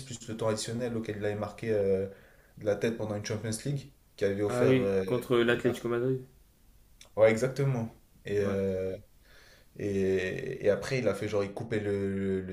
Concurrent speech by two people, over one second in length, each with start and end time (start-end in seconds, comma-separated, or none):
none